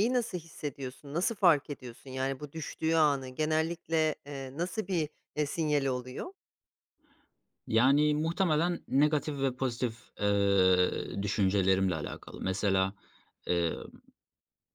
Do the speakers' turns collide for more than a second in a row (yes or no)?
no